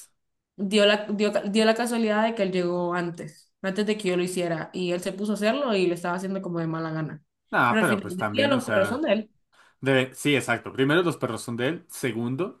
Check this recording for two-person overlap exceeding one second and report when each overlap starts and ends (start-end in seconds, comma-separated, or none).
7.7-9.1